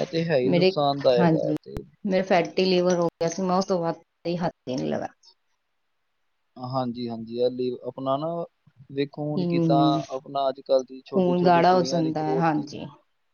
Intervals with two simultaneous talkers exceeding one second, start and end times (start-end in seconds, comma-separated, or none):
11.1-12.8